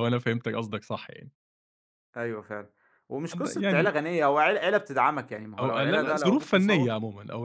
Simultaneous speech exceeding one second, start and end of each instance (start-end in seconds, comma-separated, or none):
5.6-6.9